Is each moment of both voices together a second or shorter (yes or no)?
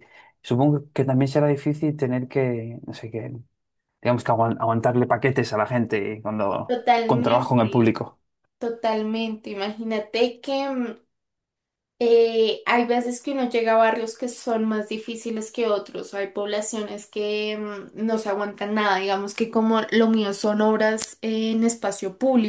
no